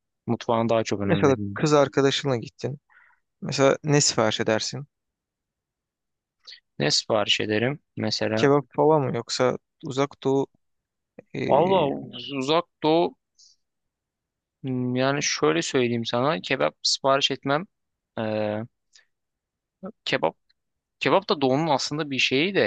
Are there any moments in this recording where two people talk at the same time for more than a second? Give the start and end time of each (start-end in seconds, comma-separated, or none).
none